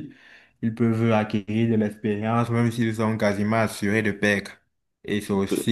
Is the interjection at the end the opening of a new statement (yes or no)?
no